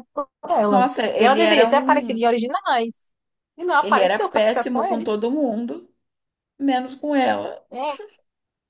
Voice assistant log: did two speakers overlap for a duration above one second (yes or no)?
yes